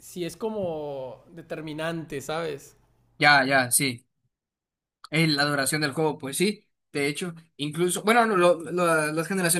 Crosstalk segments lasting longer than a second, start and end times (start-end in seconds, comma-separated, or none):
none